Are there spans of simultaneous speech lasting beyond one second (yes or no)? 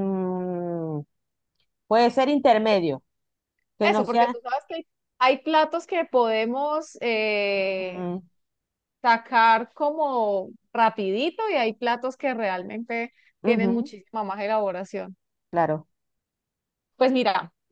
no